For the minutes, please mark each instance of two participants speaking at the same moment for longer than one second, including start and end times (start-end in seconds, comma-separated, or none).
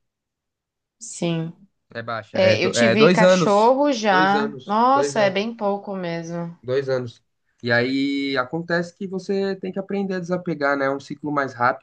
2.3-5.5